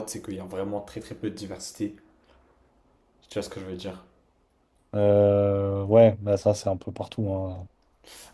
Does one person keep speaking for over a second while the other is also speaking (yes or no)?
no